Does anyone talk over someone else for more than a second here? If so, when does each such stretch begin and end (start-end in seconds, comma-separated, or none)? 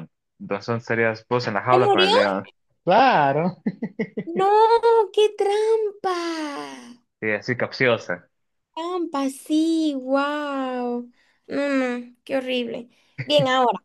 none